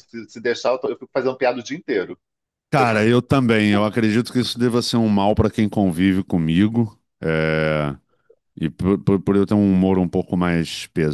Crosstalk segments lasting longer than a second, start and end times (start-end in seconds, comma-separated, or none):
none